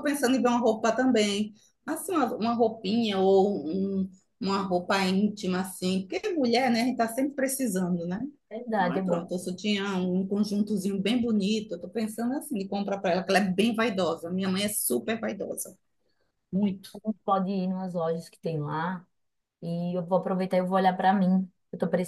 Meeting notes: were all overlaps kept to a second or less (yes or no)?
yes